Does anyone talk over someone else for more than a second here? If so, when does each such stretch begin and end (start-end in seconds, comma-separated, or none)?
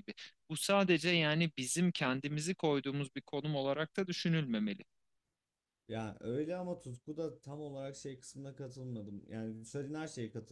none